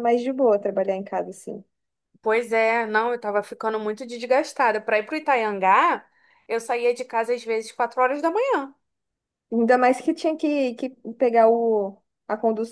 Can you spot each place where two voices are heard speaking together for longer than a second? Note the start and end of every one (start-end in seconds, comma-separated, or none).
none